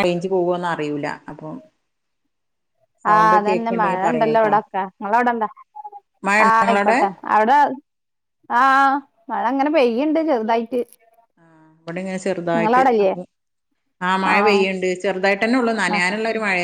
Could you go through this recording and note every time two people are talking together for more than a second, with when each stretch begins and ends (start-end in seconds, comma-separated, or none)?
3.1-4.5